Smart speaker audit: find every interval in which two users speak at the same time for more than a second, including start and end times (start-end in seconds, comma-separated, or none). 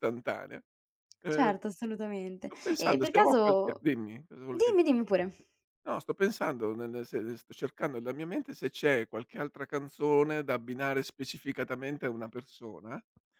2.4-3.9